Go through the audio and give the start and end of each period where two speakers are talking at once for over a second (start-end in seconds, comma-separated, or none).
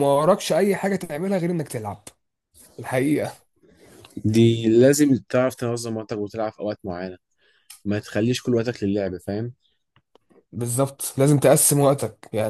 none